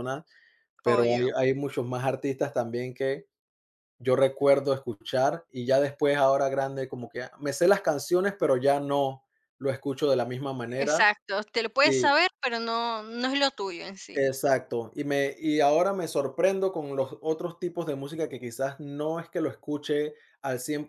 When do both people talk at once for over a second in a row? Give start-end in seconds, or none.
none